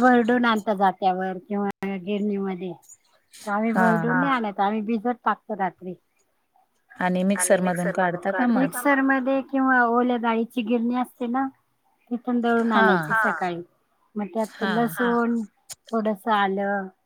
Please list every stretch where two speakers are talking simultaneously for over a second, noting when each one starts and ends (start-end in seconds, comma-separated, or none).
7.4-8.7